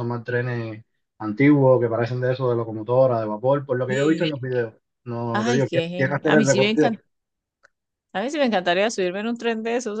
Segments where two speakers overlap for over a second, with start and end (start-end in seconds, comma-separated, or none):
5.3-6.9